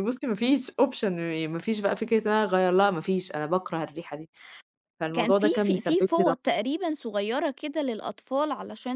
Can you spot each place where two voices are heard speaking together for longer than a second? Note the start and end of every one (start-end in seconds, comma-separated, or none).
5.1-6.4